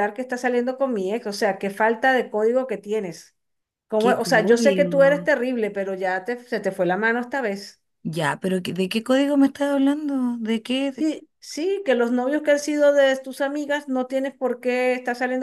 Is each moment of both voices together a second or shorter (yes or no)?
no